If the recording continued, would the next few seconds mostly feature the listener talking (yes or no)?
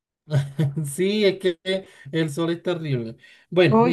no